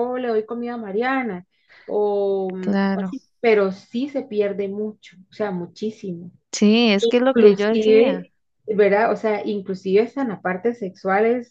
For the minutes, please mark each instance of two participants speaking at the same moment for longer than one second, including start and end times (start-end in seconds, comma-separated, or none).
7.0-8.3